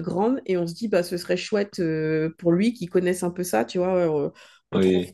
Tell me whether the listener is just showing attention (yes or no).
yes